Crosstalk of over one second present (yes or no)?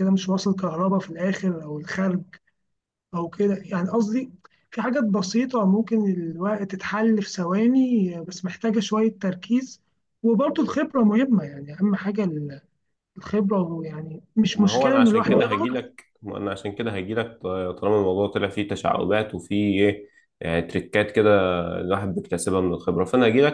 yes